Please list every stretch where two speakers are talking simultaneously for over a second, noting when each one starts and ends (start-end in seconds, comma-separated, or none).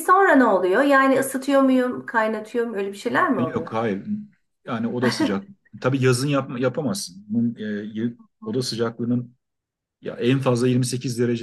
none